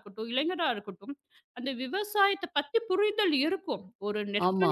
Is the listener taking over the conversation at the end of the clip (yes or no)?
no